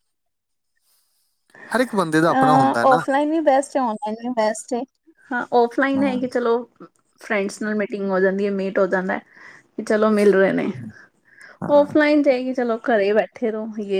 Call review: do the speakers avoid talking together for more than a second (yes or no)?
no